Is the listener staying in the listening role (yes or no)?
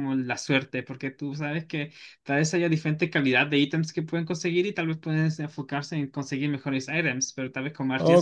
no